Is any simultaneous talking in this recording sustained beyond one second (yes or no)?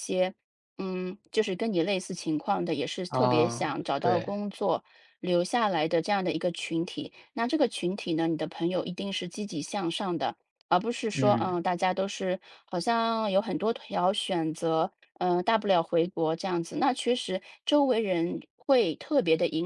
yes